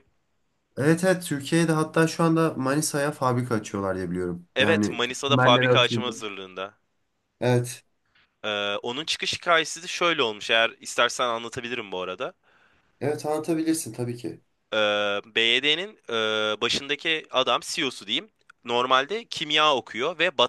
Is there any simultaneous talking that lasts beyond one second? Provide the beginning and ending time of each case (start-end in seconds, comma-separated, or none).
4.5-6.1